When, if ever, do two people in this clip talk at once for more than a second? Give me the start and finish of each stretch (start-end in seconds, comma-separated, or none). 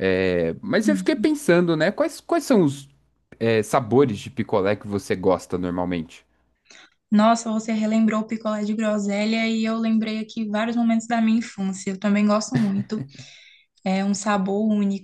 none